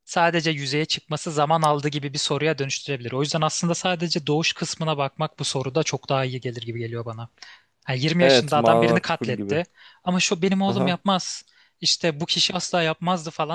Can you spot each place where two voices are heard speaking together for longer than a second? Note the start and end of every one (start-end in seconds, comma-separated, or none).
8.2-9.6